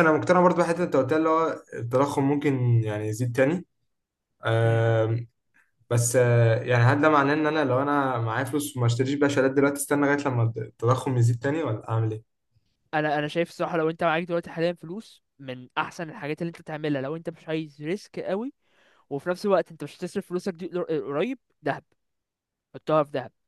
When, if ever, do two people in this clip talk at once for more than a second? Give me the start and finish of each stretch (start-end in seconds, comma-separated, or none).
none